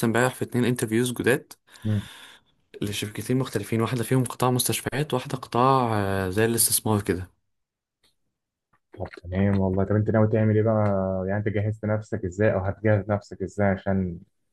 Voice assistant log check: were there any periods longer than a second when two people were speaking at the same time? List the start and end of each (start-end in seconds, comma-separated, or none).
none